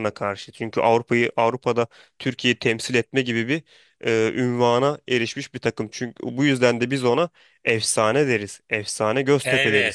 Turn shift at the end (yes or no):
yes